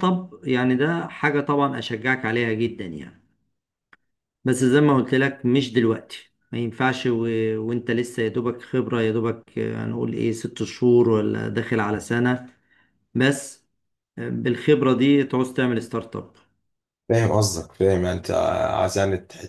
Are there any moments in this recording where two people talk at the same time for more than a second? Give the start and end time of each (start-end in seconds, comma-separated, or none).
none